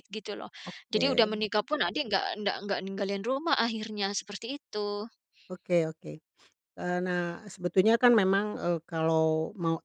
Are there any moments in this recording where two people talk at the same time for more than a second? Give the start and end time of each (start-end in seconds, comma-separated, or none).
none